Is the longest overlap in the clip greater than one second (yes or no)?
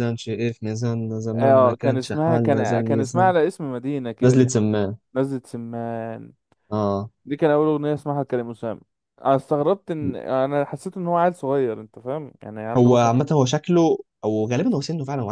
yes